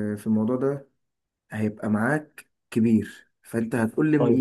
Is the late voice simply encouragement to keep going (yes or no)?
yes